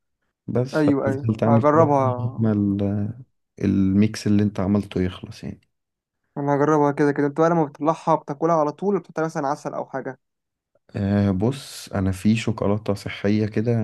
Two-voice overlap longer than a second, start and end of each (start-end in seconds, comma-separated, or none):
0.8-2.5